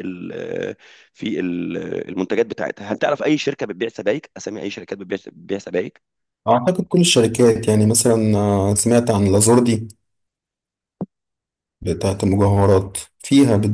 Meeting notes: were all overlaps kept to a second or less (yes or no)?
yes